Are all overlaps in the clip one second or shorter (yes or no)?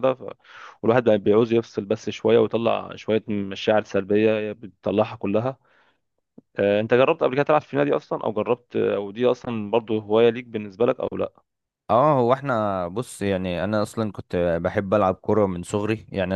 yes